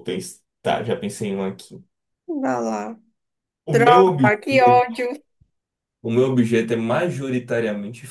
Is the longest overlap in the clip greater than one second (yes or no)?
yes